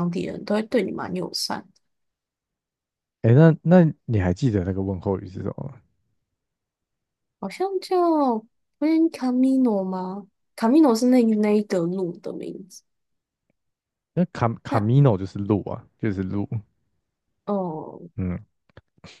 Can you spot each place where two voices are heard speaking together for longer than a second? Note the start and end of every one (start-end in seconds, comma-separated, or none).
none